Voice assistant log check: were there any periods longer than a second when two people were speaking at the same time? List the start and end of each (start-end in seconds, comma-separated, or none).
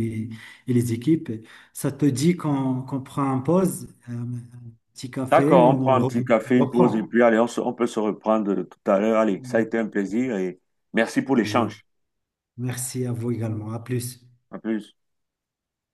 5.3-7.1